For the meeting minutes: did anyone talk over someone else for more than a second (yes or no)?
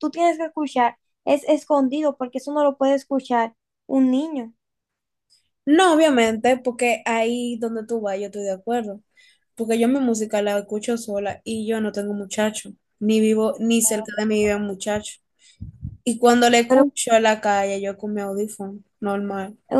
no